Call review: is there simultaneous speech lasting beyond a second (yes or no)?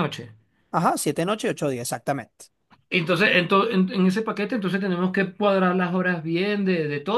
no